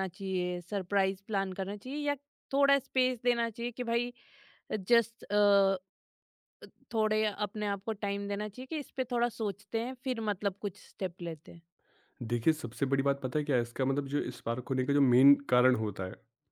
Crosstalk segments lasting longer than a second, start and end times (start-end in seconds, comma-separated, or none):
none